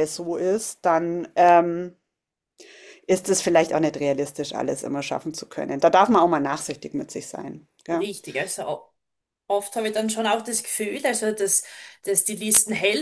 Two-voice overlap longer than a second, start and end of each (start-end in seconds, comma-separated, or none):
none